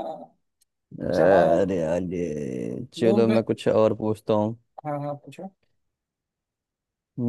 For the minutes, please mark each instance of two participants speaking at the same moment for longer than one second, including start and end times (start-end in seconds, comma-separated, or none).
none